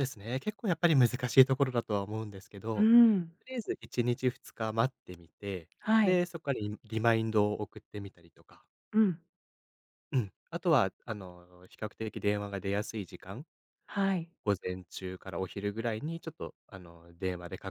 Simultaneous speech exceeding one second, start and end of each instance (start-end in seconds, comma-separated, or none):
none